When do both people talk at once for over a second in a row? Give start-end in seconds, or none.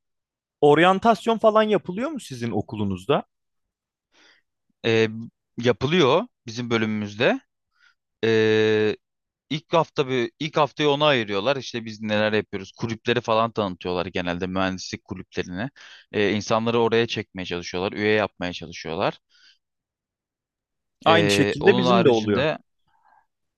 21.1-22.5